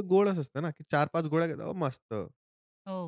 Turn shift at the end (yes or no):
yes